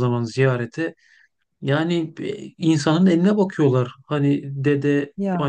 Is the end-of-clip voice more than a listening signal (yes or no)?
no